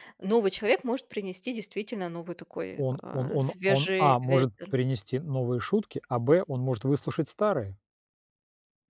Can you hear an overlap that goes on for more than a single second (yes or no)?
yes